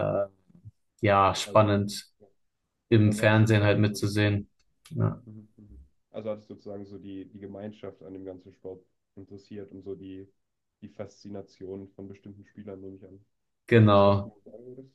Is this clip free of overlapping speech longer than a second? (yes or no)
no